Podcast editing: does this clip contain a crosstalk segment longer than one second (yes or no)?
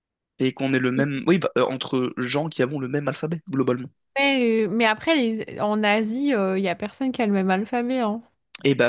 no